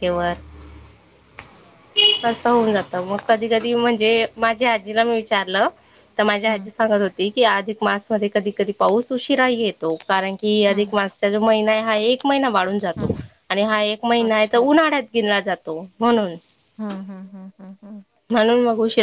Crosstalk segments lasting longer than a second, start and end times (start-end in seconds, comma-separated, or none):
none